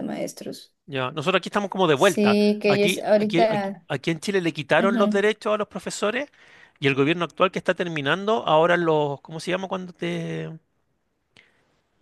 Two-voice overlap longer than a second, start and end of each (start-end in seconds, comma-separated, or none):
1.9-3.9